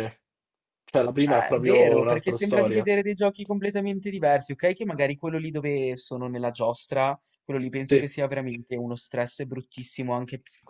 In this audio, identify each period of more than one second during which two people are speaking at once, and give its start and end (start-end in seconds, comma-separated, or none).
1.3-2.9